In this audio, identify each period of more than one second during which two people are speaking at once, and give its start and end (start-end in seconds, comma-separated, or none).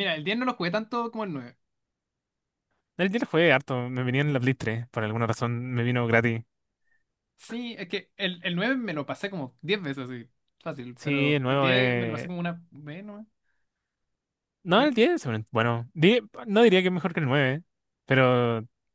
11.0-12.3